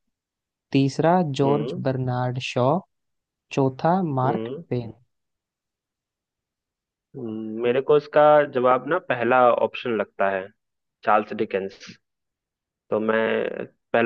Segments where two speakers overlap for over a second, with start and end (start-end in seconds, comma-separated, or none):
none